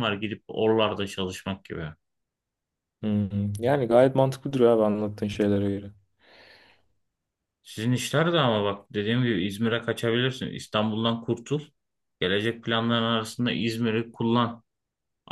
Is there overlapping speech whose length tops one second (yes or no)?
no